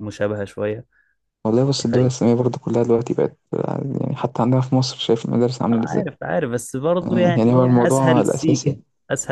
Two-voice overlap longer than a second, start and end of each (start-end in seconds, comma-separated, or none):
7.0-8.8